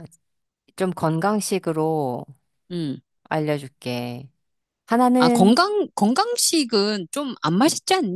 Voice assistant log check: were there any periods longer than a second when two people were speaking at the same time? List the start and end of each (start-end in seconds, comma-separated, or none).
none